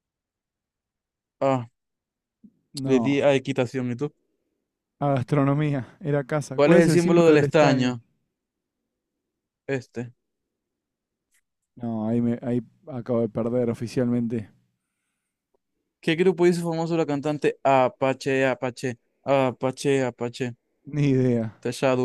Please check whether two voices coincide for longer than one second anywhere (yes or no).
yes